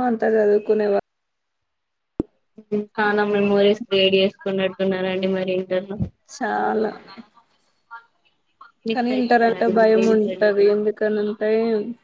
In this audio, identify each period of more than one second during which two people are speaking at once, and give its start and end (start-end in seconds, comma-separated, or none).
8.9-10.5